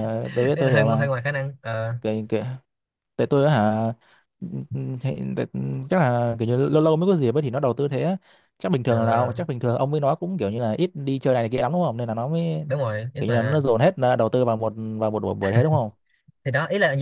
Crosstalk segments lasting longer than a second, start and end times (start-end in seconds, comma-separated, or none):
none